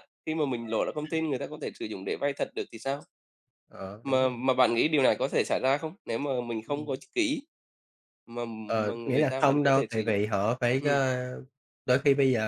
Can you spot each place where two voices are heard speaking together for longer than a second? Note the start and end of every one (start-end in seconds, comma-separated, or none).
8.9-10.2